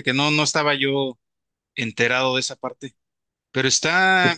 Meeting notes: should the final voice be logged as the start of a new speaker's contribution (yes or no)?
no